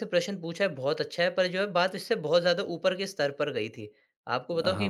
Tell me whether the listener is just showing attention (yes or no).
yes